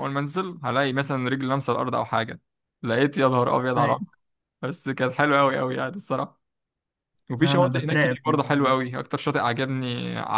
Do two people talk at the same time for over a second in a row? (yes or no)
yes